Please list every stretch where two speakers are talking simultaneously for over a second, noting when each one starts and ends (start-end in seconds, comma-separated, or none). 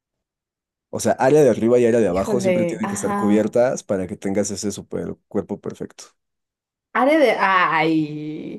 2.0-3.5